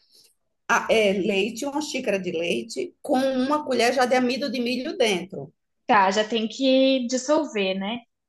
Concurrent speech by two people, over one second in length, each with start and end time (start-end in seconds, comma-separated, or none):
none